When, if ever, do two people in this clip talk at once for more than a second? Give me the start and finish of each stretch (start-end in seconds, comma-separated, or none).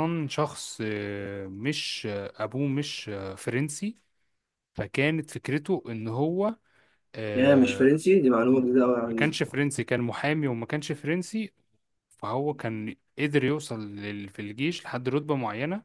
none